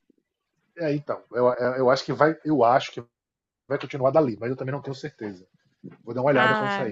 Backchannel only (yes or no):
no